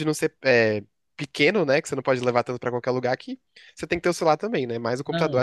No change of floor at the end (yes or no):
no